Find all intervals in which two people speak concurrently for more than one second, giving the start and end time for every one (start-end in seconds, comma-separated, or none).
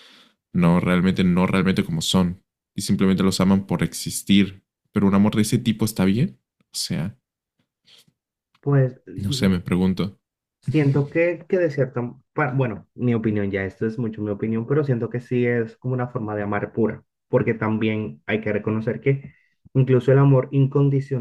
none